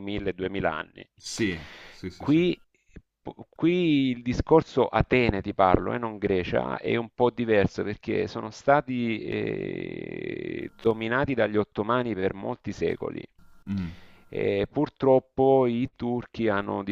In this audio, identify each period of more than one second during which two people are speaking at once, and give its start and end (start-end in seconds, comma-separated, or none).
none